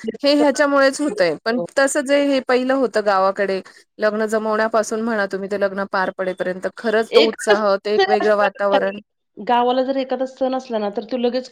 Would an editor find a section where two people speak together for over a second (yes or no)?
yes